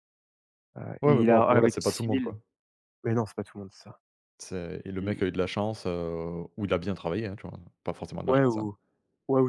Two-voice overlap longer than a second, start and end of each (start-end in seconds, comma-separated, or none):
1.0-2.4